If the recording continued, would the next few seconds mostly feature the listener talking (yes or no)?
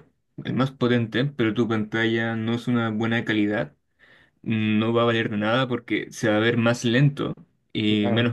no